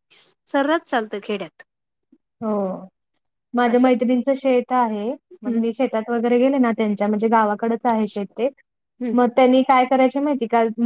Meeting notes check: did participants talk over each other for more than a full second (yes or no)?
no